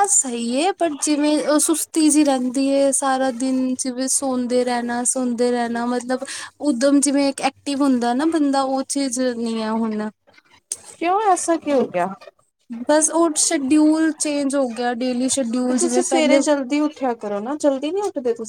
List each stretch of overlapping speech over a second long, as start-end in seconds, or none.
none